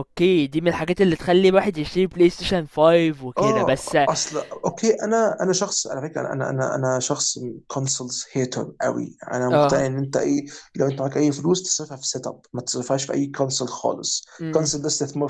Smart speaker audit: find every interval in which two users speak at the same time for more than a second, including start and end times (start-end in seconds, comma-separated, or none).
none